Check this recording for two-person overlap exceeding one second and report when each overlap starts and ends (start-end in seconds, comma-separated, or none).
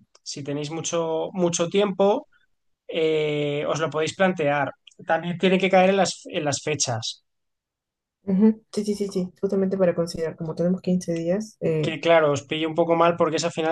none